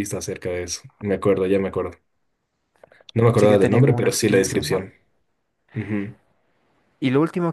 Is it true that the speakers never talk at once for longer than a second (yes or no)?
no